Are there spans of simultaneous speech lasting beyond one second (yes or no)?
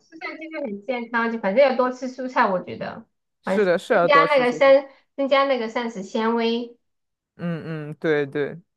yes